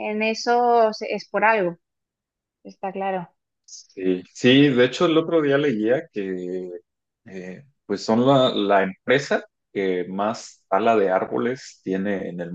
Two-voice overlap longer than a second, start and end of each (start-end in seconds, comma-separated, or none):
none